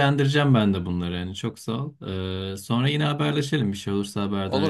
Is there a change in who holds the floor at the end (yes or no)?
yes